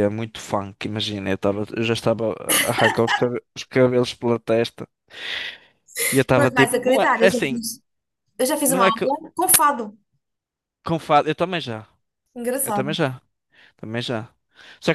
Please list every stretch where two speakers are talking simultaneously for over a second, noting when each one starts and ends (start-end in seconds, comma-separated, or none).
6.4-7.6